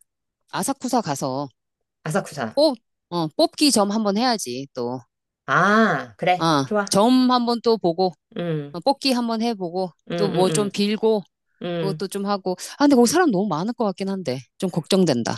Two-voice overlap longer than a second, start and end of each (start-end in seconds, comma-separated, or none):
none